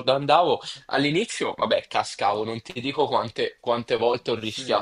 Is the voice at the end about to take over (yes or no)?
no